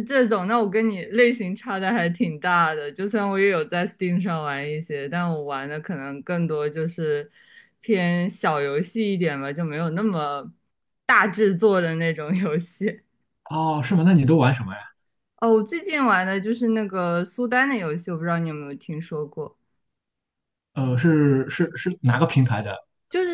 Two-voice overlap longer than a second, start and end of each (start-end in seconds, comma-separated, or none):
none